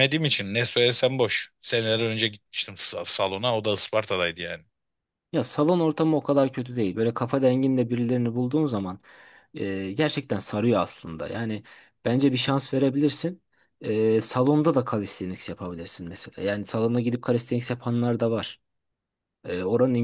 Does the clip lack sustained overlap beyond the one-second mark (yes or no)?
yes